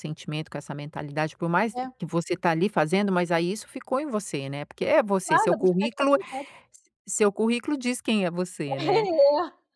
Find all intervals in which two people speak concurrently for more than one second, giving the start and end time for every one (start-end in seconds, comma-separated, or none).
4.8-6.2